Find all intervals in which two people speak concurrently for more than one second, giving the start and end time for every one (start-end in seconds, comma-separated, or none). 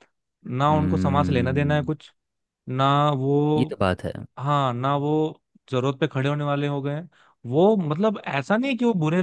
0.7-1.9